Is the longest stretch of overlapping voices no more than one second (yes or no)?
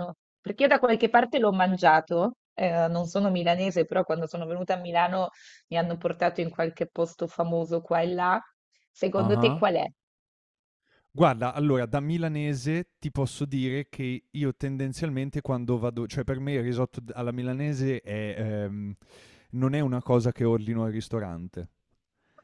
yes